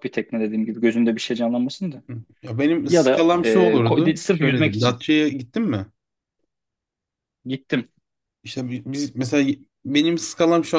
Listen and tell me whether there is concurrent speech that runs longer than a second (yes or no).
yes